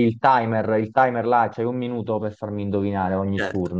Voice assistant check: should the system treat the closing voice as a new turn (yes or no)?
yes